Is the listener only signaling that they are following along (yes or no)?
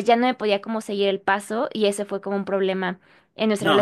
no